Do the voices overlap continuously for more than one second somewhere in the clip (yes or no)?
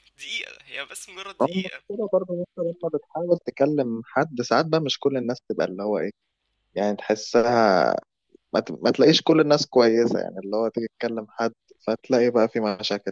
no